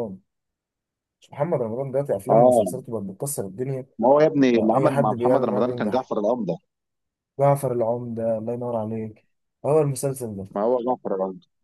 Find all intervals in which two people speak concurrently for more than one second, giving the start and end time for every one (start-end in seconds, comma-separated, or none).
4.5-6.1